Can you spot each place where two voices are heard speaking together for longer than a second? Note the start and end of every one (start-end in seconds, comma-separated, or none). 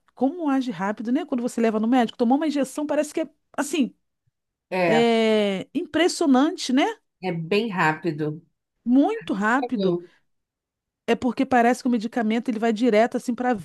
none